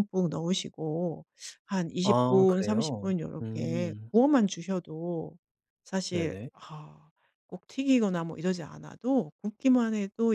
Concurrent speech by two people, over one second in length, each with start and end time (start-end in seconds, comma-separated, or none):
2.0-4.1